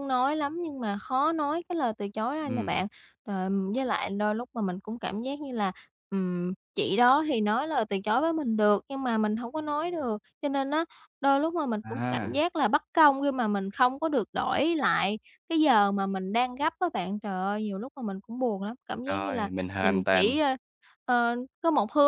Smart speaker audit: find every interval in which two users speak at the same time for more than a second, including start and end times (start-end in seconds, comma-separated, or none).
19.0-20.4